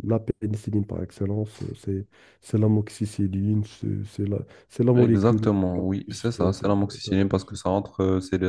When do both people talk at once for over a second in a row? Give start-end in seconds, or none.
5.0-7.6